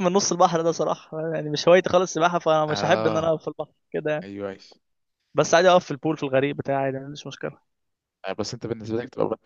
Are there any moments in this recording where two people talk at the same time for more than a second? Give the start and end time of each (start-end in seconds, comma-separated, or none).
none